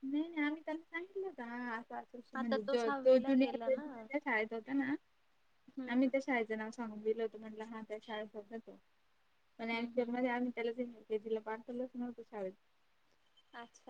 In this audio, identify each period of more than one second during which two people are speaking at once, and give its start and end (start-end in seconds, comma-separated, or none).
2.4-4.2